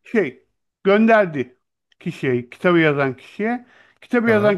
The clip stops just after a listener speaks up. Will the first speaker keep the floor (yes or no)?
yes